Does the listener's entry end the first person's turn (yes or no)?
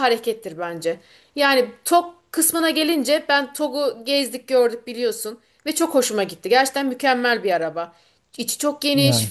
no